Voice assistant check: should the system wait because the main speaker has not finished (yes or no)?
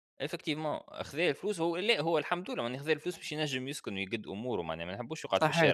no